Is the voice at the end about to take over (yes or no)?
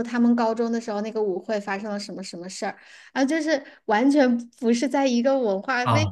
yes